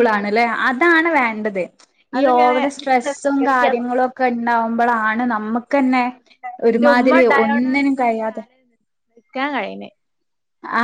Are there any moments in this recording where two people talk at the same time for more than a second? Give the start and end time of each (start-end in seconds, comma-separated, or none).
2.2-3.6, 6.7-8.4